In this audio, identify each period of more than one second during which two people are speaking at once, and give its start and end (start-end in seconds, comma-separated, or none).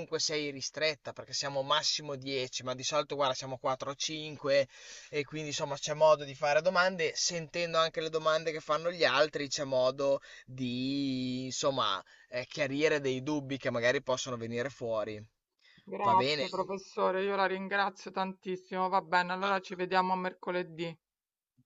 none